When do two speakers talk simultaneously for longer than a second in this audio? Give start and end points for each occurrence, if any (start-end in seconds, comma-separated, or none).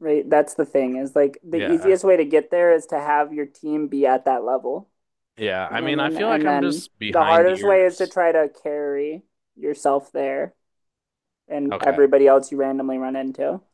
5.7-8.2